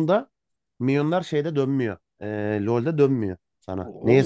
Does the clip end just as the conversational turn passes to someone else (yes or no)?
yes